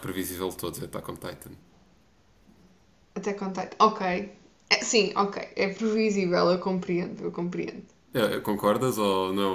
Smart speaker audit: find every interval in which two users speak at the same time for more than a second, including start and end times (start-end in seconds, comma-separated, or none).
none